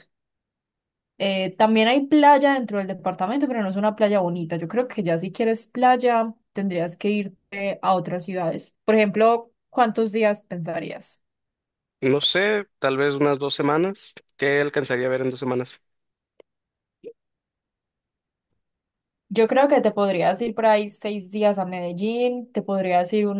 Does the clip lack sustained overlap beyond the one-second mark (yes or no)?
yes